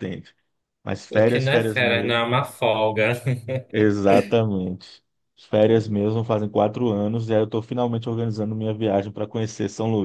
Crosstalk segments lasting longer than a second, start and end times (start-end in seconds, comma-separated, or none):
1.1-2.3